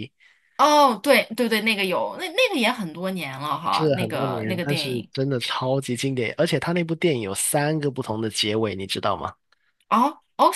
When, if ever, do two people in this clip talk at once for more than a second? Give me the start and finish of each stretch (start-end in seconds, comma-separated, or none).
3.7-5.1